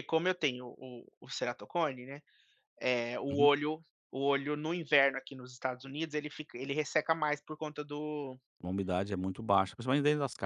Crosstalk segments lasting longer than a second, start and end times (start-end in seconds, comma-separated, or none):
none